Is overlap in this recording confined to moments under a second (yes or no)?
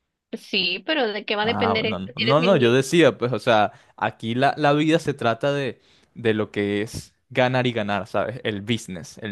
no